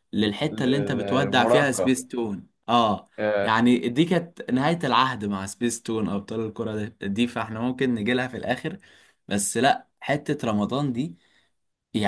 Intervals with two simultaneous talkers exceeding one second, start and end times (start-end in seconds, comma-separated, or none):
0.5-1.9